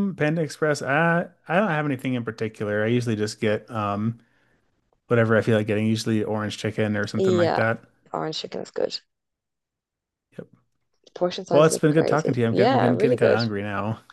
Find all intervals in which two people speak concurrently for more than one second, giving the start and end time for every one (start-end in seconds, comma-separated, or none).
11.5-13.4